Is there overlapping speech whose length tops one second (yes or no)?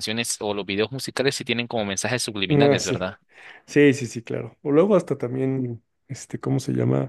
no